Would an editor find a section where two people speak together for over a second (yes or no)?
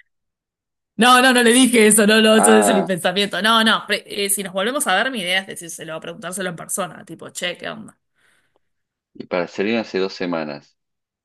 no